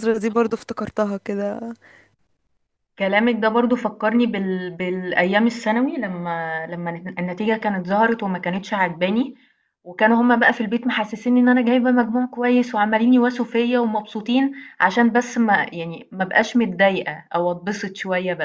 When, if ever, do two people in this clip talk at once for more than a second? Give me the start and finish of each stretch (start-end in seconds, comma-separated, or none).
none